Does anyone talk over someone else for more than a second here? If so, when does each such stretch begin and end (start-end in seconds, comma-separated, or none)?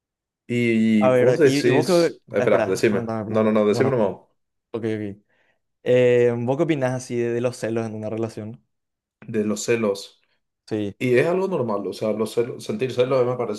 1.0-4.1